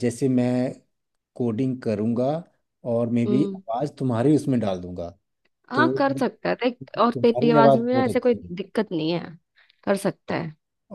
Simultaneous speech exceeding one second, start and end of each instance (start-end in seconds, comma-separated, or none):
6.8-8.5